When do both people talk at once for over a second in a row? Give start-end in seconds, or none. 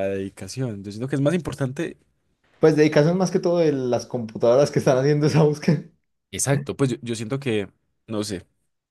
none